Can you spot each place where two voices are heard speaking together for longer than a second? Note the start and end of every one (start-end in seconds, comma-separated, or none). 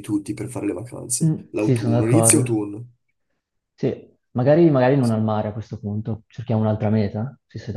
1.2-2.6